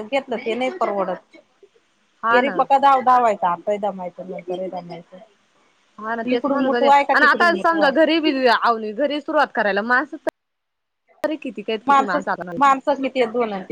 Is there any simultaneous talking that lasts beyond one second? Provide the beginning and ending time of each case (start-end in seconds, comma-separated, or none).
6.3-8.1